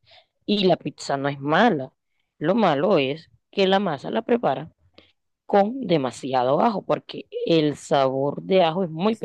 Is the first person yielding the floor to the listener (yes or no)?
yes